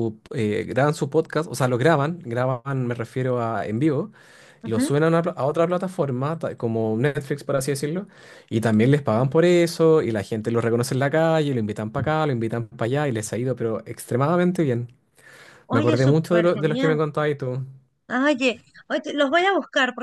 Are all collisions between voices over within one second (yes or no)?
no